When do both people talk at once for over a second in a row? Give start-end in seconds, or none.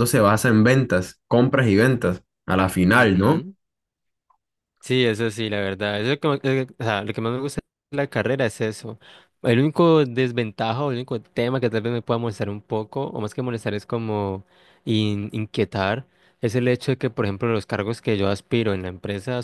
none